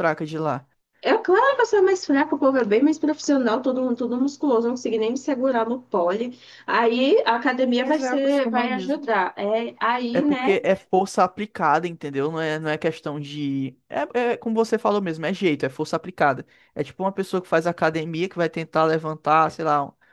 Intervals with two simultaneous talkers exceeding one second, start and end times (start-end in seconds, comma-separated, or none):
7.8-9.0